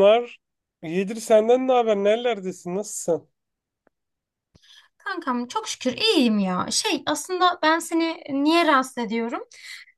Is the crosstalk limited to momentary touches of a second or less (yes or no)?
yes